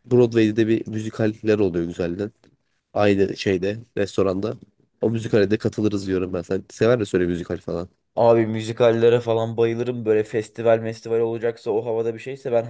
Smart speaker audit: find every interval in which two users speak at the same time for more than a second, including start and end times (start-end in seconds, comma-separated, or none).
none